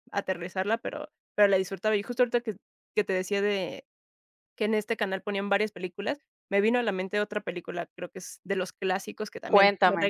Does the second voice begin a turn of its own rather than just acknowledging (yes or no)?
no